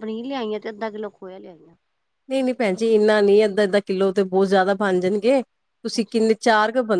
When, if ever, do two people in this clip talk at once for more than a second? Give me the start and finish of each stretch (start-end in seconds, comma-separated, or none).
none